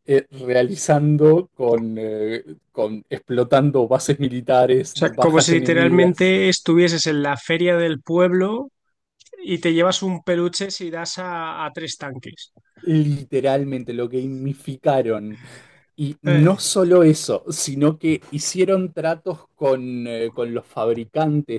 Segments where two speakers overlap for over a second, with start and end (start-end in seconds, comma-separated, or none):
5.0-6.3